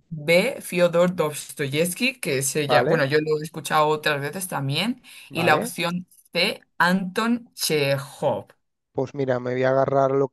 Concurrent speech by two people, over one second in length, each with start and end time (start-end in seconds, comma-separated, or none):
none